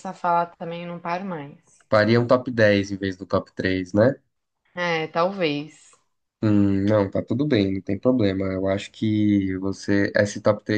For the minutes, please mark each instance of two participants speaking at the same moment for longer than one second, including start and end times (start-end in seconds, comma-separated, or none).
none